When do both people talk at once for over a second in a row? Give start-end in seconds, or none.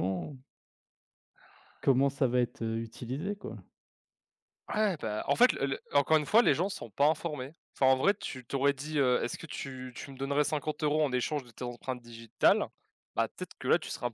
none